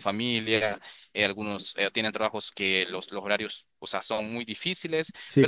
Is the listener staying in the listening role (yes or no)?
yes